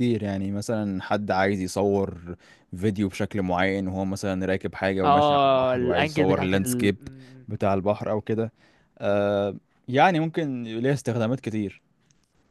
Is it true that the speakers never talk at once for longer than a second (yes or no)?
no